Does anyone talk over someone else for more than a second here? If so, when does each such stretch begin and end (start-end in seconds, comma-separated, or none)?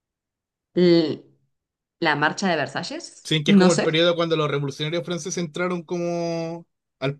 none